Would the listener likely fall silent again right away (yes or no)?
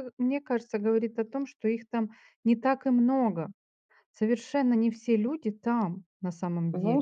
no